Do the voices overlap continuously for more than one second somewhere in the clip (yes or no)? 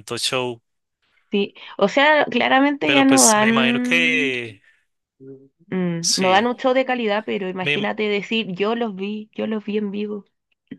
yes